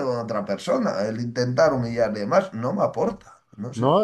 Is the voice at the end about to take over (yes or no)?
yes